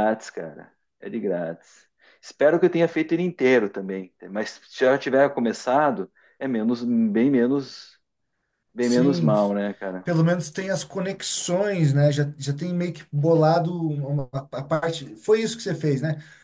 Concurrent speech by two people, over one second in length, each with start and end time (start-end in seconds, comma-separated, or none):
none